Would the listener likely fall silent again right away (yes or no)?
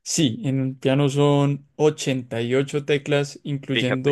yes